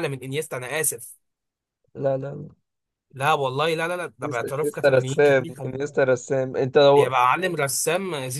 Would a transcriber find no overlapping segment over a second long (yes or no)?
no